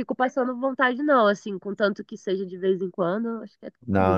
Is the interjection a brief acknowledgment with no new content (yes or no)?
no